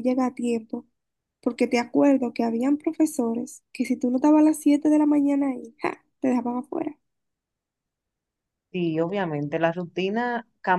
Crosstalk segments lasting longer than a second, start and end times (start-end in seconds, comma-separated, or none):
none